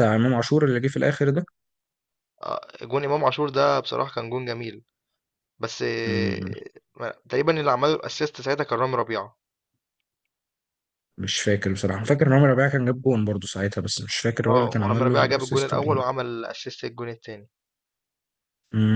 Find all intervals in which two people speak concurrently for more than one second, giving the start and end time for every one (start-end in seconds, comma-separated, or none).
14.5-16.0